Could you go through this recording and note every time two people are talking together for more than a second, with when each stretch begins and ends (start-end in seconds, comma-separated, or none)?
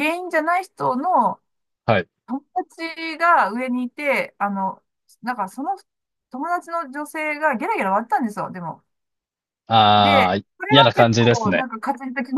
10.0-11.7